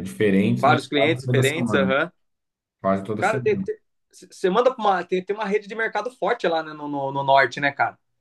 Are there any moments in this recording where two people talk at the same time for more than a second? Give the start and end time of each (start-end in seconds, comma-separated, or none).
0.6-2.0